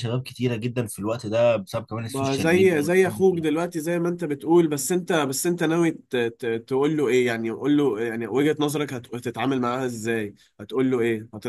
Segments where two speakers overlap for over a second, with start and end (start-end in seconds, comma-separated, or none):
2.1-3.5